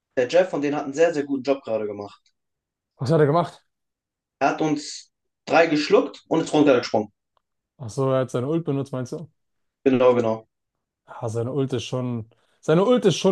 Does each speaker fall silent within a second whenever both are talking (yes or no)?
yes